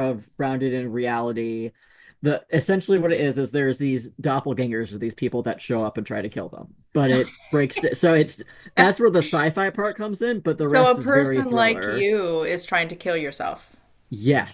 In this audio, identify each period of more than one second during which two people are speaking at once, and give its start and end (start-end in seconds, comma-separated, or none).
10.6-12.1